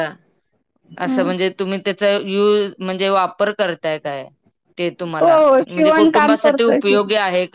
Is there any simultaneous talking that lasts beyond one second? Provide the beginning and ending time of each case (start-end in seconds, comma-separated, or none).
5.2-7.0